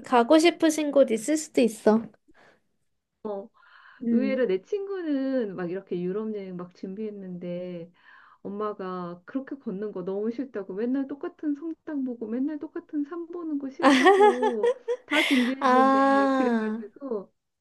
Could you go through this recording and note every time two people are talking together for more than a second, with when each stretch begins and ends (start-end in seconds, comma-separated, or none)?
15.6-16.8